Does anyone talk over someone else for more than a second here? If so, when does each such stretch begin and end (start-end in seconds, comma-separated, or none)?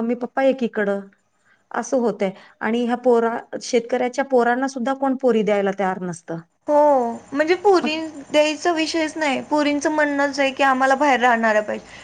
none